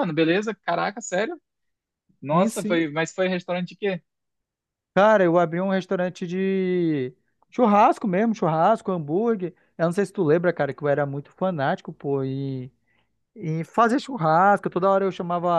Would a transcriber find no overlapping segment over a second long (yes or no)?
yes